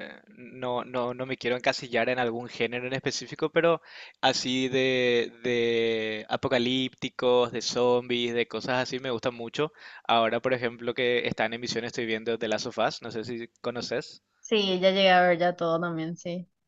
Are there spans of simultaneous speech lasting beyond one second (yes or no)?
no